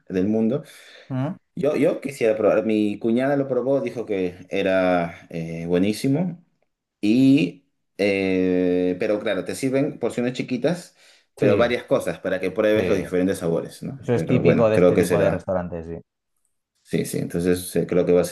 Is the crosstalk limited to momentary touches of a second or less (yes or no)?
no